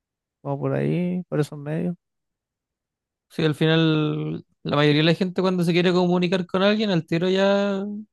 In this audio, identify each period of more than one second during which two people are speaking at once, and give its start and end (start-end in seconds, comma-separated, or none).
none